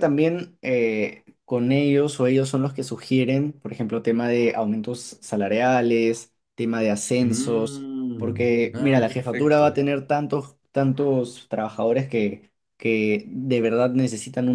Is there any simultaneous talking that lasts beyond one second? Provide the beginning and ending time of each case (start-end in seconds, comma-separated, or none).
7.2-9.8